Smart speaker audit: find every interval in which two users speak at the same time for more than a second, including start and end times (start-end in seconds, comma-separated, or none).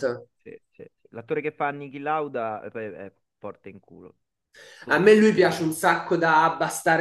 none